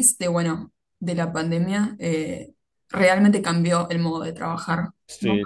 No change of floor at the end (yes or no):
no